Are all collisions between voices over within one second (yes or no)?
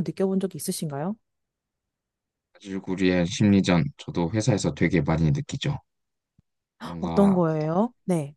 yes